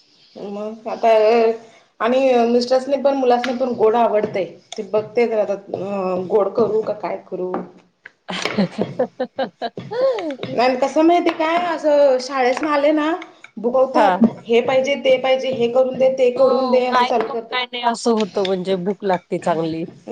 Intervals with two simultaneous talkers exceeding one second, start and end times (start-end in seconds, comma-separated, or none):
16.4-17.8